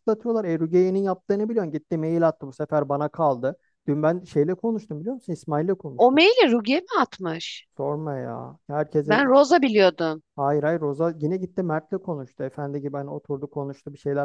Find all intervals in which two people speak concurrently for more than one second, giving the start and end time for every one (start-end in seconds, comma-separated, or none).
none